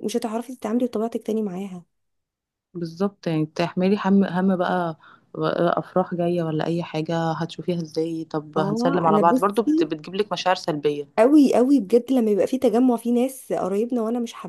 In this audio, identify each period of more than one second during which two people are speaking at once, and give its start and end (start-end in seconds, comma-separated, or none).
8.6-9.9